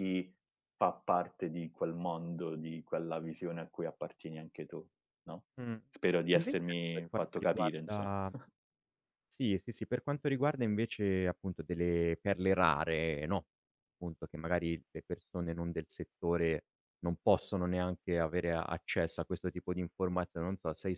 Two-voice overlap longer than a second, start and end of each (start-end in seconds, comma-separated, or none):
6.3-8.2